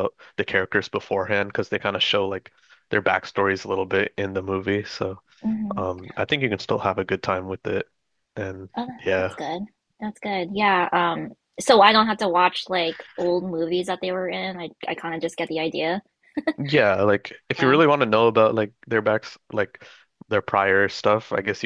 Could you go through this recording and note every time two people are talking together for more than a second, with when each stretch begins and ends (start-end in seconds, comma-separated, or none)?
none